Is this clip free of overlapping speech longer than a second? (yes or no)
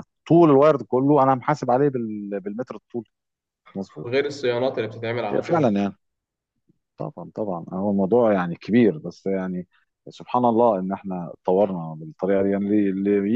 yes